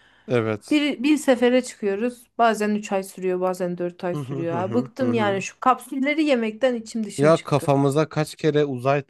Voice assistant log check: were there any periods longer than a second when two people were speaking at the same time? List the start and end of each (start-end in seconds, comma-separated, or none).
4.1-5.4